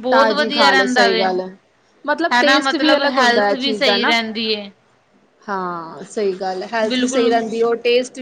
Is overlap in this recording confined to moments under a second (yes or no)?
no